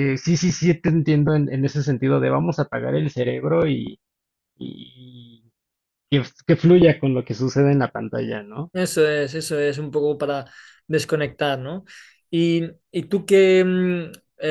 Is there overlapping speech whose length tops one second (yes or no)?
no